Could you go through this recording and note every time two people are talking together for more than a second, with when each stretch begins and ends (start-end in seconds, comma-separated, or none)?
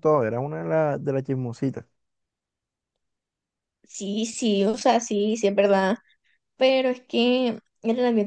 none